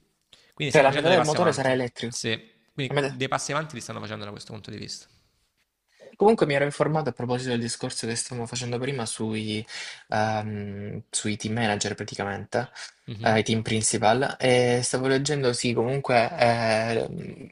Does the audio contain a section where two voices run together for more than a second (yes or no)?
yes